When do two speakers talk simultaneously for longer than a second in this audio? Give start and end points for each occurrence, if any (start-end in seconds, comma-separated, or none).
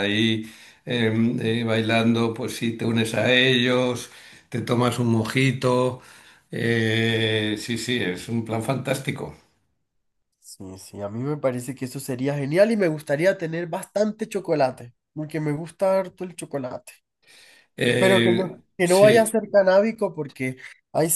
18.0-19.3